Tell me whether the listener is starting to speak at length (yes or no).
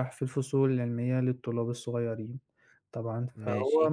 no